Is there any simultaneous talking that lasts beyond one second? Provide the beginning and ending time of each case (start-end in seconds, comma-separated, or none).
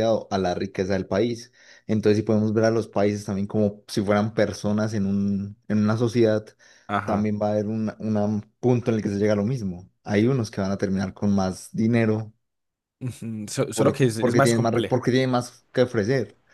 13.7-15.0